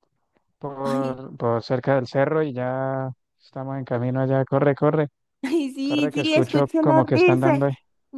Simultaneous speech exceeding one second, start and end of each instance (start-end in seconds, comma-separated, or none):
5.8-7.6